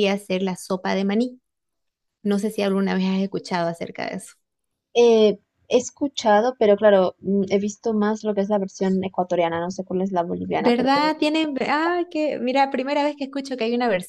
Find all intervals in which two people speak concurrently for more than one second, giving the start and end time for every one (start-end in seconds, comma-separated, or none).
none